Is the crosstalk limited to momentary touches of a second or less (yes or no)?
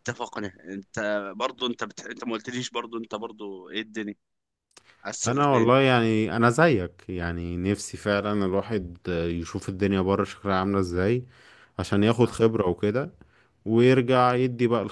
yes